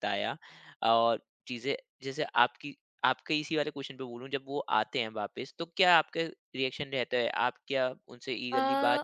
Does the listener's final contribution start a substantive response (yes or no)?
no